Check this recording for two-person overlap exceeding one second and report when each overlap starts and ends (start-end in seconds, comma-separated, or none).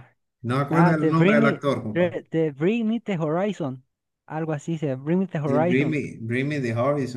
0.7-2.1